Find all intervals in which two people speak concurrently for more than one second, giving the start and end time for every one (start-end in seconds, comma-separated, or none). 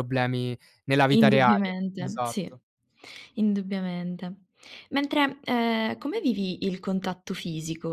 1.1-2.6